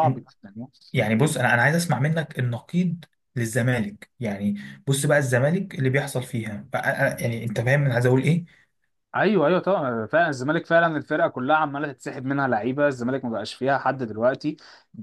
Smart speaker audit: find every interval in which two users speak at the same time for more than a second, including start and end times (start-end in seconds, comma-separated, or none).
none